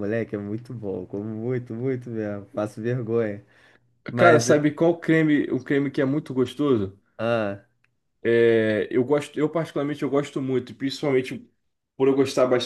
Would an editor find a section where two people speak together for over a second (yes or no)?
no